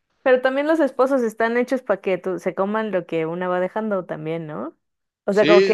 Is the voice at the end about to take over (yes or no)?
no